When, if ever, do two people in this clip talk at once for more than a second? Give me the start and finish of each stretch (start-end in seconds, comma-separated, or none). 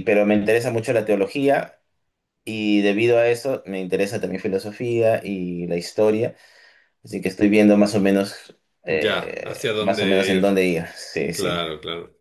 8.9-10.5